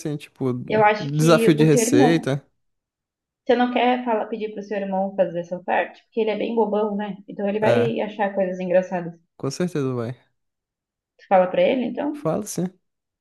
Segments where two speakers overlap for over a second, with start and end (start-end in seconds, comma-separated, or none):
1.0-2.3